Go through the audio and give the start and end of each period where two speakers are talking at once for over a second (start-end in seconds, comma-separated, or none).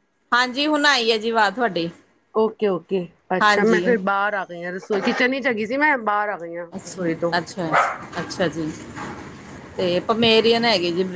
none